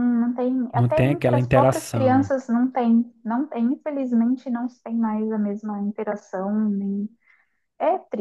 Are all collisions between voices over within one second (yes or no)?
no